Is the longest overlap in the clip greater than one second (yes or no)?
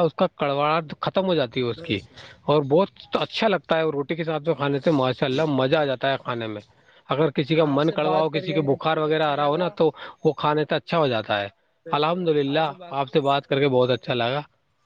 yes